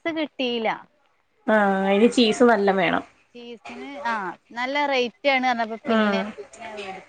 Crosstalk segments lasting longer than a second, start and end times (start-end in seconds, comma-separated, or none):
none